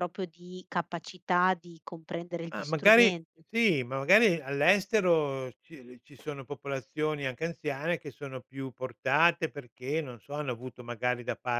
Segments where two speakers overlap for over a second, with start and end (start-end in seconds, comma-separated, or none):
none